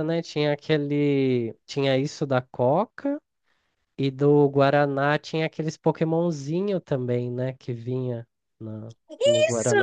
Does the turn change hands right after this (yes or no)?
yes